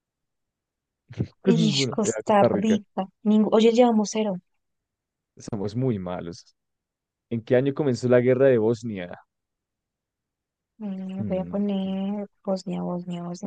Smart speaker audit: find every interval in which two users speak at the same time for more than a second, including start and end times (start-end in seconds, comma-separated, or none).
1.6-2.8